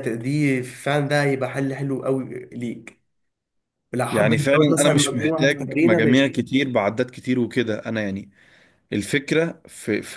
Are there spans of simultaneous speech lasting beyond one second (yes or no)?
yes